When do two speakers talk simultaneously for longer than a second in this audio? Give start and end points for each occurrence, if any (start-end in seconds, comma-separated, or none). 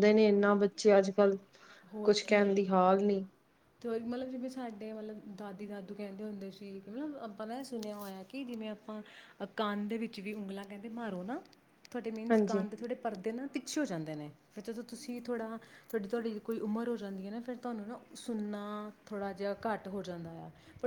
none